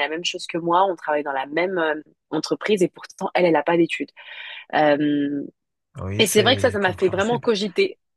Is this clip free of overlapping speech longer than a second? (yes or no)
no